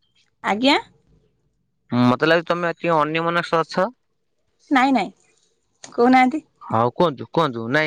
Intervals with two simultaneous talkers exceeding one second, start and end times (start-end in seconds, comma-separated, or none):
none